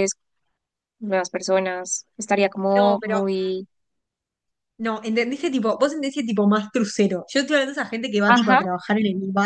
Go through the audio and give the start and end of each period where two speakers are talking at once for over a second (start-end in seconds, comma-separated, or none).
none